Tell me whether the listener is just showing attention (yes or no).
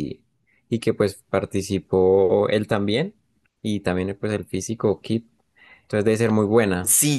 no